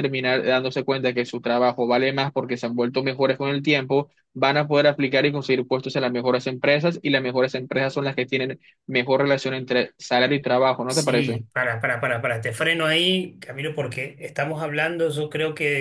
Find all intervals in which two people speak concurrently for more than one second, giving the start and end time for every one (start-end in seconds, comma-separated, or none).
none